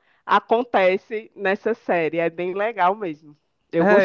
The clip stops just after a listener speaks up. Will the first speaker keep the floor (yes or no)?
no